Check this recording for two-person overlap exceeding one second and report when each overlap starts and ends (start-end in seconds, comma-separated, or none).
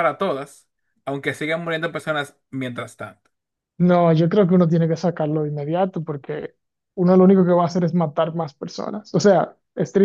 none